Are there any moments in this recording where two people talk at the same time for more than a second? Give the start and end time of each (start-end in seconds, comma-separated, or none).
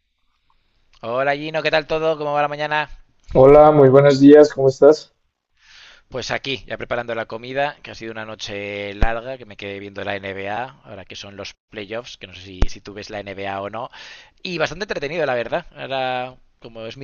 none